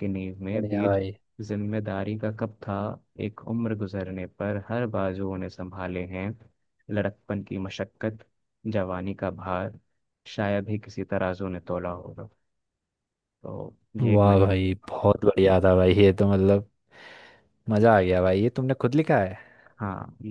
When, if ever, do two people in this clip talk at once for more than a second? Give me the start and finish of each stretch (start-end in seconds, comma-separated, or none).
none